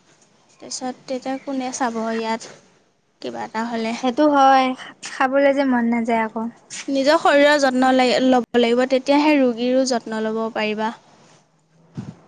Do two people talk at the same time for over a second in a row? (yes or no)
no